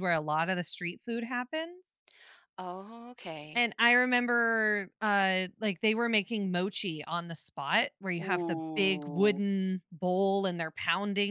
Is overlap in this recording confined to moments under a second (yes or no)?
no